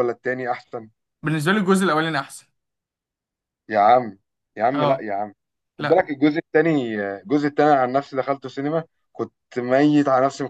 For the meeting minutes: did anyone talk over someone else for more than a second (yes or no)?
no